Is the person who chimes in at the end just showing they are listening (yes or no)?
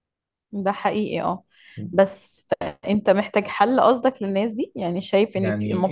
no